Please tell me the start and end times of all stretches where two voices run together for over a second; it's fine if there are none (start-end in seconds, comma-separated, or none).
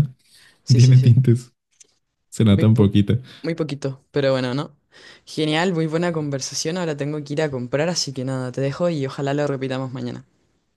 none